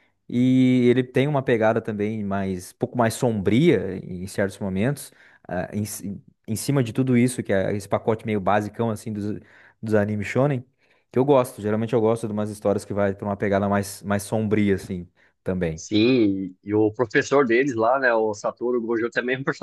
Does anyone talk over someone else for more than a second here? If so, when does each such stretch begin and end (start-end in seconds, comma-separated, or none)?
none